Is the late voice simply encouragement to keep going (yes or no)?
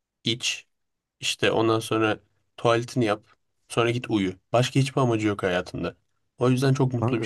yes